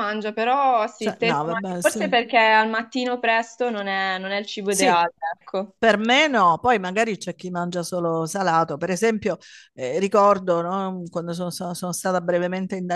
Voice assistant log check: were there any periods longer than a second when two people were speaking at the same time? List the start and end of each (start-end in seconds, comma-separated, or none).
0.9-2.2